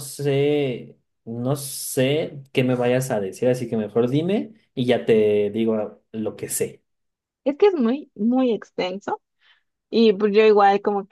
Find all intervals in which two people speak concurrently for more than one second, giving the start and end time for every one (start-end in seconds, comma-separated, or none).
none